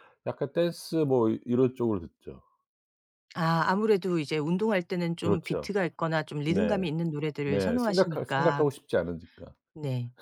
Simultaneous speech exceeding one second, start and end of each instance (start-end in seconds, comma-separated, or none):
7.4-8.6